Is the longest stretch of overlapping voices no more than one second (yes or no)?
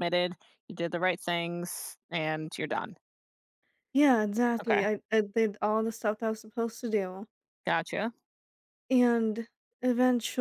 yes